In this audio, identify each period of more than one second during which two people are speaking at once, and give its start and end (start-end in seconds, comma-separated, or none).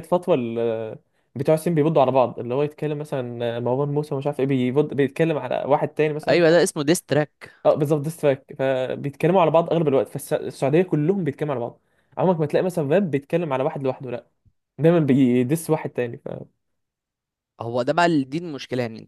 none